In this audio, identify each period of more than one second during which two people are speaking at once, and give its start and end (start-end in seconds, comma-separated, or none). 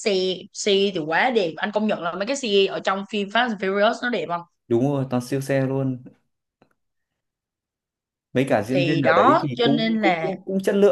8.7-10.4